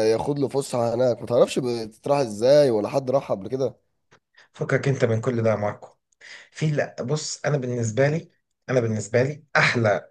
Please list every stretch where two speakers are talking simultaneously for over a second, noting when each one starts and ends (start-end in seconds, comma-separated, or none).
none